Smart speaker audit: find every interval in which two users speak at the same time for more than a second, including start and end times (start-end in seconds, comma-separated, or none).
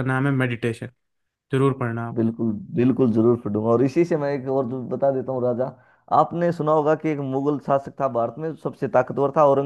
none